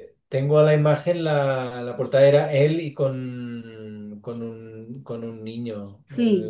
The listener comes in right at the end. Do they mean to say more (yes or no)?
yes